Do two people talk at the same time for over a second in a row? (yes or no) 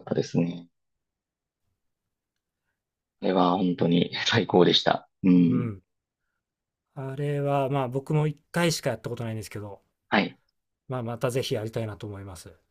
no